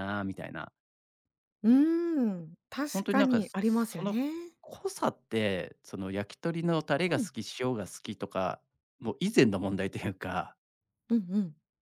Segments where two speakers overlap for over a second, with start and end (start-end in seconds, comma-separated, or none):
2.9-4.2